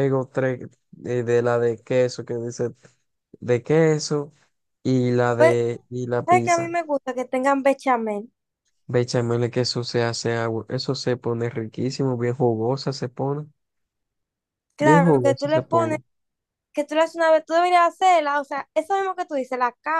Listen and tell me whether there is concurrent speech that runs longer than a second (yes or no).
yes